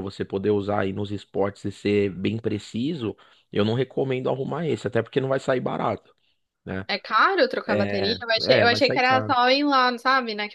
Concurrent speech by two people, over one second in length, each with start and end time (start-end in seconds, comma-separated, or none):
7.7-9.4